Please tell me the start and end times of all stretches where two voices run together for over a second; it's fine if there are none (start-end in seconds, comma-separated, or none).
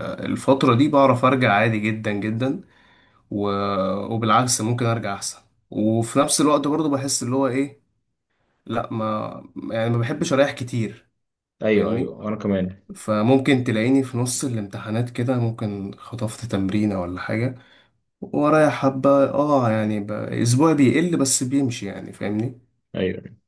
none